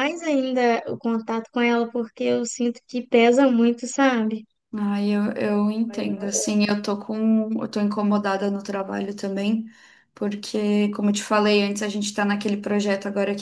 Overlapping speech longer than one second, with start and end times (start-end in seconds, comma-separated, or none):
none